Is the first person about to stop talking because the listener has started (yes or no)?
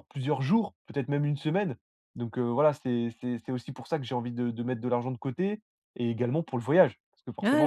yes